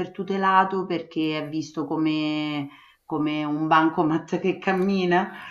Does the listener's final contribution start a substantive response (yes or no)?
no